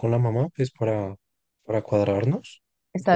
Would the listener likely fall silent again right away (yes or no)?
yes